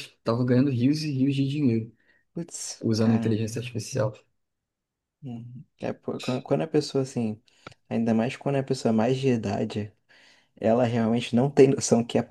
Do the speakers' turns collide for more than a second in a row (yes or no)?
no